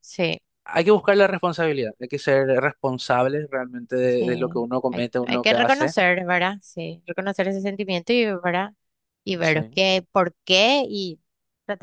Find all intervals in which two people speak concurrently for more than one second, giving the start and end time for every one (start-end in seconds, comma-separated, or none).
4.1-5.9